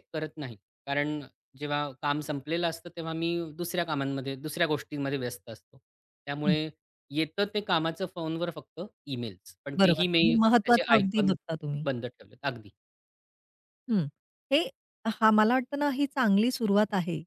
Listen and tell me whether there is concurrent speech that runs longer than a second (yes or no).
yes